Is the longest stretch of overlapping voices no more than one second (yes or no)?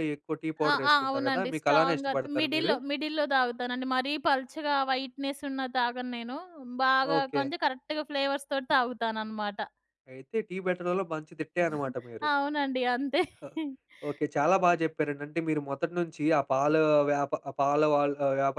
no